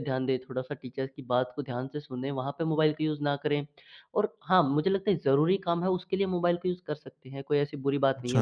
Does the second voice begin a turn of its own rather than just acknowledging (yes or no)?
no